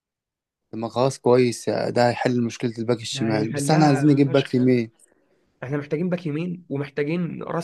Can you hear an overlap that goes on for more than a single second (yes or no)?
yes